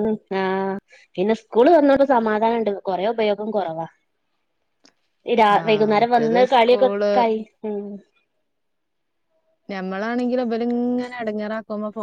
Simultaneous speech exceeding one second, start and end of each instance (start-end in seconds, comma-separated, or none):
5.7-7.1